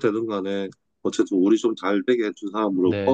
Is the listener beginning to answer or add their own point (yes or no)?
yes